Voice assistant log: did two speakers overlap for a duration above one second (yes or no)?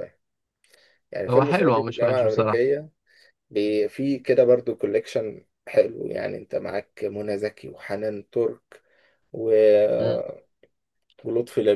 yes